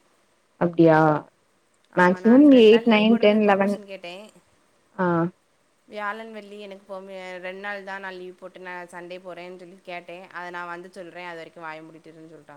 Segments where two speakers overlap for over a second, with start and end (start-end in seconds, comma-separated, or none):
2.0-3.7